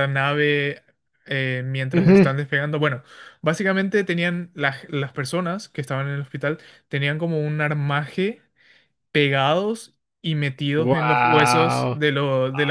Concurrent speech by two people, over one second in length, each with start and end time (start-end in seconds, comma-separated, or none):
10.8-12.0